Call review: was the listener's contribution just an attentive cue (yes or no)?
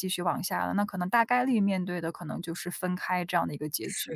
no